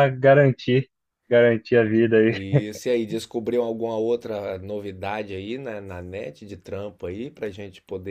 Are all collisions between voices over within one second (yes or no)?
yes